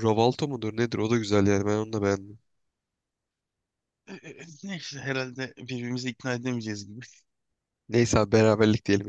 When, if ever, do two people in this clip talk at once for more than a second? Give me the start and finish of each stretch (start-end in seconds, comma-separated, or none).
none